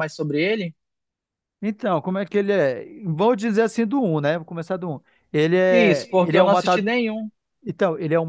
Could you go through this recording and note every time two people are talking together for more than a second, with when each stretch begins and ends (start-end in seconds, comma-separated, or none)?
5.7-6.9